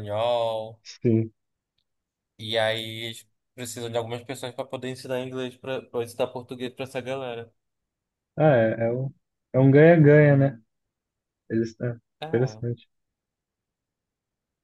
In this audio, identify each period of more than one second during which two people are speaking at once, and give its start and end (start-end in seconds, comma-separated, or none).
none